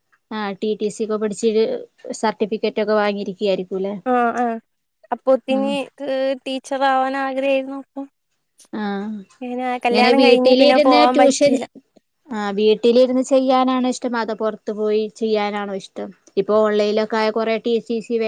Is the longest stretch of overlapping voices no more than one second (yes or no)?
no